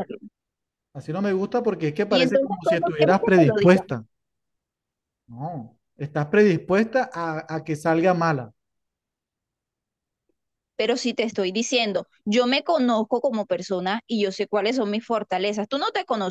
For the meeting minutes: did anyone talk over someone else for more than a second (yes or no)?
yes